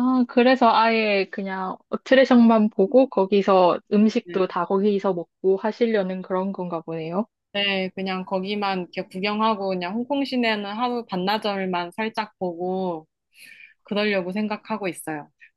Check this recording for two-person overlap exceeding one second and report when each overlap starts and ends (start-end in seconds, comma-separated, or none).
none